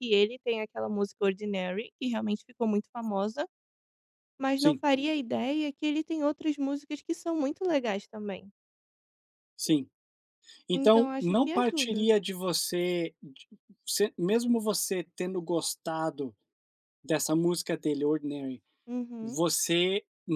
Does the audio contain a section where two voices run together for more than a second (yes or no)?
yes